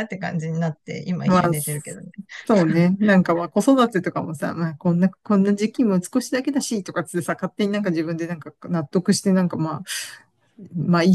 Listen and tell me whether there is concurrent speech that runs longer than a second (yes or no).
no